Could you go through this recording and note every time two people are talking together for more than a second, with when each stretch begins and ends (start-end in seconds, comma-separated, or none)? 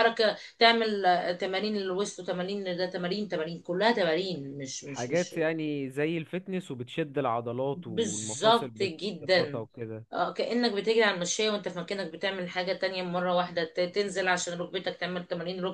7.7-9.6